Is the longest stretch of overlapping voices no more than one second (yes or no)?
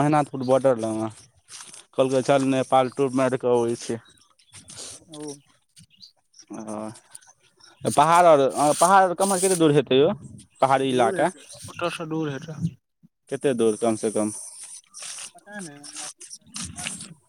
yes